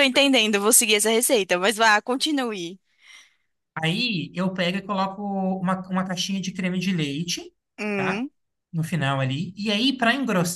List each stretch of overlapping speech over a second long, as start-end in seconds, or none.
none